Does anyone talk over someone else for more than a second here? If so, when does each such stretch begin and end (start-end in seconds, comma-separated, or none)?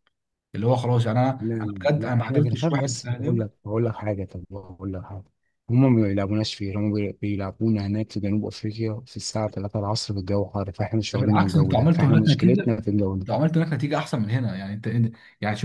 1.4-3.4, 11.1-12.7